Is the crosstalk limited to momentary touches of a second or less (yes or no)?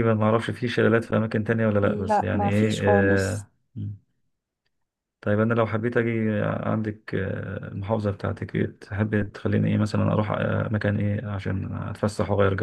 no